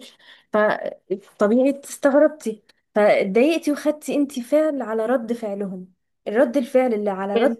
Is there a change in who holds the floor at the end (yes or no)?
no